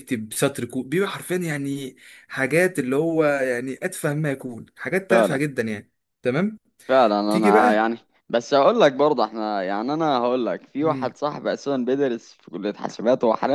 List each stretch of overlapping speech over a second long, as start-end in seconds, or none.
none